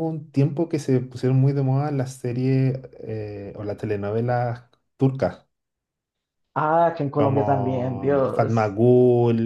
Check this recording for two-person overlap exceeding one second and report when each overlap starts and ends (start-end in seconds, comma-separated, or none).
7.2-8.8